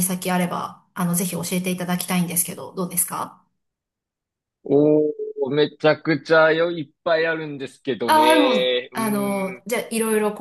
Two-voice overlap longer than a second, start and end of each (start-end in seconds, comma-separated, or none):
8.1-9.7